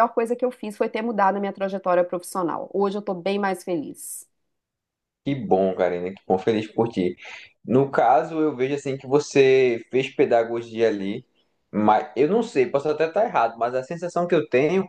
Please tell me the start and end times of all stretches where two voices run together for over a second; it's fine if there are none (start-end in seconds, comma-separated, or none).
none